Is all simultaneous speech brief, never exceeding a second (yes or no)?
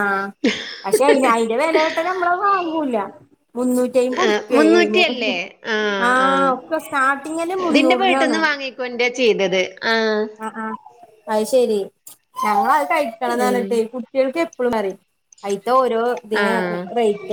yes